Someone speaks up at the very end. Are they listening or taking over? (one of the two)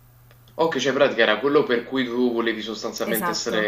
taking over